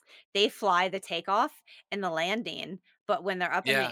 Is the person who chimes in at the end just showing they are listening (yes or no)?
yes